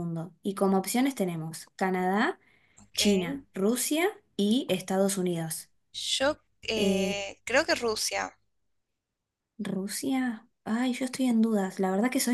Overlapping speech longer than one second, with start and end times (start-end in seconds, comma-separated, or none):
none